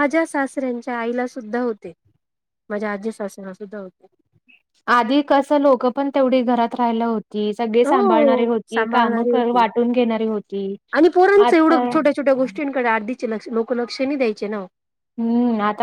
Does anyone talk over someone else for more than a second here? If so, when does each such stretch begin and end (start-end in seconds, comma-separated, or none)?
7.9-9.6